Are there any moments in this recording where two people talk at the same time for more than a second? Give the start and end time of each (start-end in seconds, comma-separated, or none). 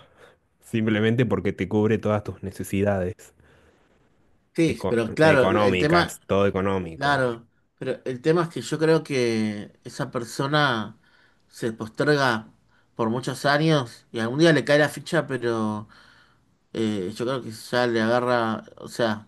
4.7-6.2